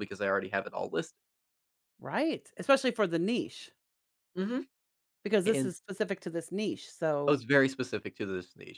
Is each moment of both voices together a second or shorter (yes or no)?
yes